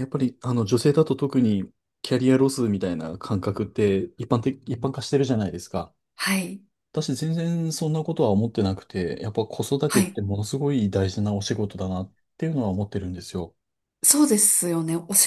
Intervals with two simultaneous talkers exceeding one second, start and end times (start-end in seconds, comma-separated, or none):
none